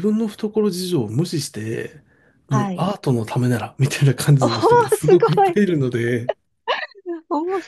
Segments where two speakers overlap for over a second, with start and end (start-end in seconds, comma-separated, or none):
4.4-5.6